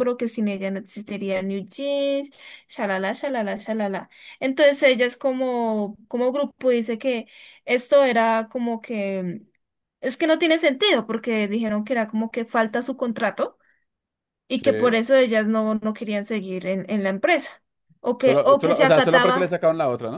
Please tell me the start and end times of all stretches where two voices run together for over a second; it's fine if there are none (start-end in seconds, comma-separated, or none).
18.2-19.5